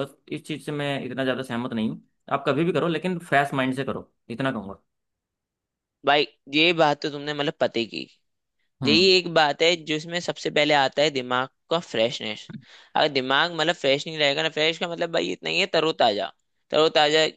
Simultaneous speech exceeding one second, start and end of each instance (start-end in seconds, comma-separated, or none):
none